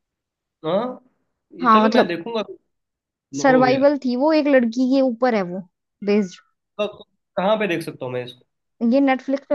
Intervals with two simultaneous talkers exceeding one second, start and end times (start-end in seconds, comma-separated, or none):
none